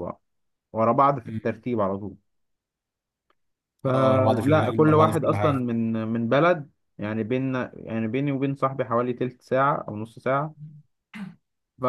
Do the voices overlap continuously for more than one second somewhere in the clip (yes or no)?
yes